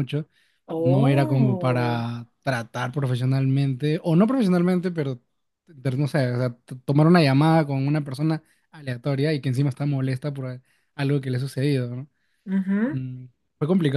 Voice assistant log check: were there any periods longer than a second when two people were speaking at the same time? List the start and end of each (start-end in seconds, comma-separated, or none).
0.8-2.0